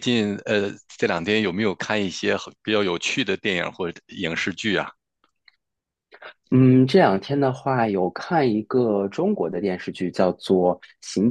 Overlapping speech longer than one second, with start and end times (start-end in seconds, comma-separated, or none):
none